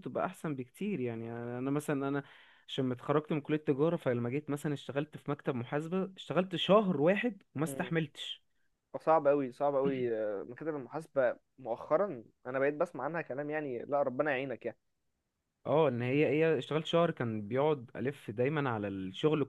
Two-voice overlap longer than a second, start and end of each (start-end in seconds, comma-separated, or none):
none